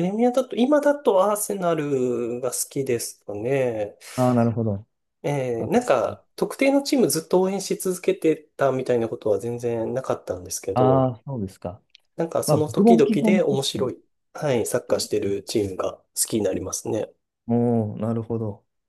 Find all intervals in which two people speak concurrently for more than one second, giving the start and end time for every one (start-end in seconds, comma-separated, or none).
12.4-13.9